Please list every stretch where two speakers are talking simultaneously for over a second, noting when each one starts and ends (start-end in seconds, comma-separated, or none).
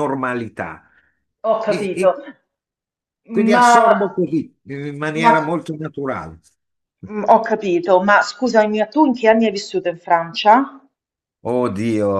none